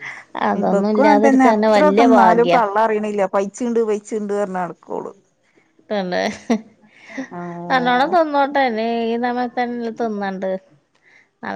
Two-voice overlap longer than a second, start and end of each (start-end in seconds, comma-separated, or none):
0.6-2.6